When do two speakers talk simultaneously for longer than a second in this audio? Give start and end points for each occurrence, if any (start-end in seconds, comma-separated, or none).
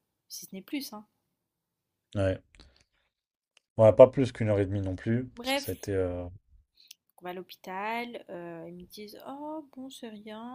none